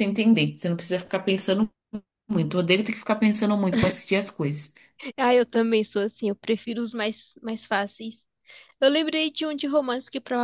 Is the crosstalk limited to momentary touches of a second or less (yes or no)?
yes